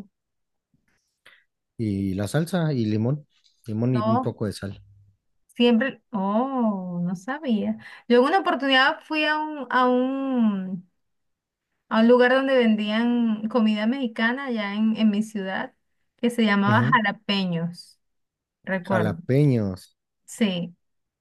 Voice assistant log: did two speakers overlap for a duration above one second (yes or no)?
no